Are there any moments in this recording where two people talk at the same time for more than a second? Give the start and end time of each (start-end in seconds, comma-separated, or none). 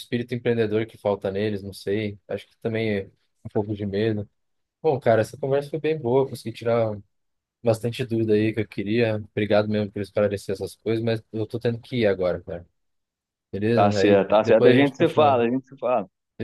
13.7-15.4